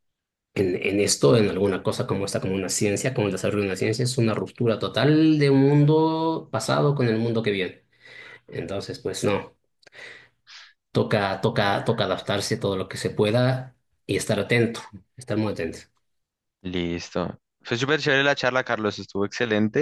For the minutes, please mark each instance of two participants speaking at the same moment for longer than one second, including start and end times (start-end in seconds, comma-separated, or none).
none